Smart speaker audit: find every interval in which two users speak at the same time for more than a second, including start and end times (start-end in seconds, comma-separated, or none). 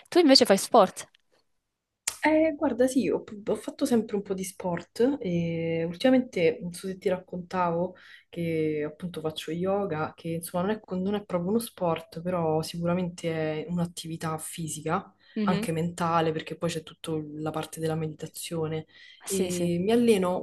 none